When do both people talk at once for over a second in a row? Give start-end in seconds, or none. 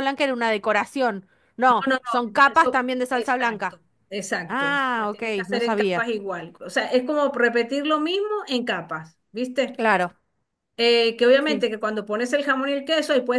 1.7-3.8, 4.5-6.1